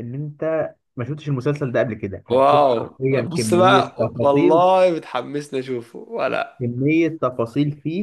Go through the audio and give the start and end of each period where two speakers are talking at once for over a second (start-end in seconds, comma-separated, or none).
2.3-4.7